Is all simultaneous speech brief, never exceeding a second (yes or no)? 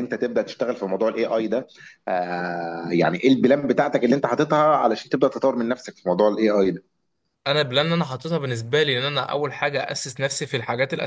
yes